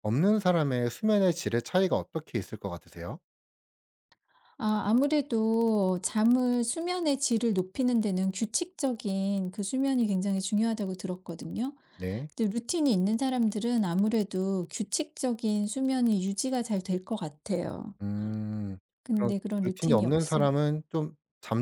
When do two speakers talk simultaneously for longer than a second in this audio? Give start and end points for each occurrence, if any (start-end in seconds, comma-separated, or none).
19.0-20.5